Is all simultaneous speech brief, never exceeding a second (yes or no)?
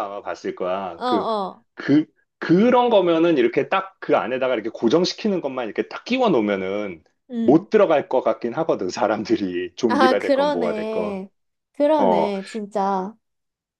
no